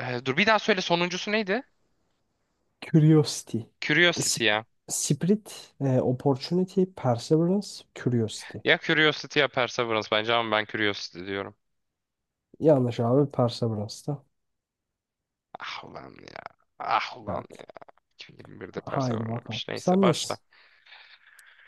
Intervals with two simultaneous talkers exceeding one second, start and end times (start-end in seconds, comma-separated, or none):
18.9-20.4